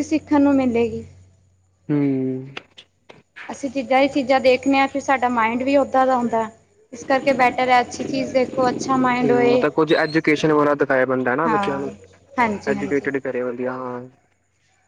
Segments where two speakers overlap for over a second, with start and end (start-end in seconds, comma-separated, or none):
none